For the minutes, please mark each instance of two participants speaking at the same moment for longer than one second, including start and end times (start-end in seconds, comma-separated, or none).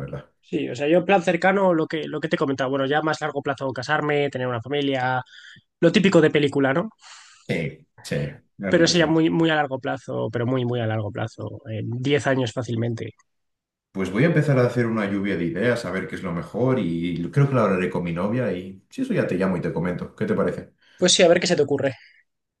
none